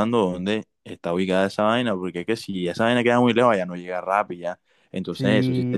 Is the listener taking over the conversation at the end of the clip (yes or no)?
yes